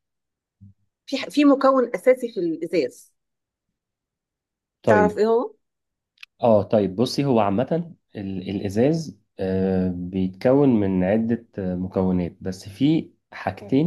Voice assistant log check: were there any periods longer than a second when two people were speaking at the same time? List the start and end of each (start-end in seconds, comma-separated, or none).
none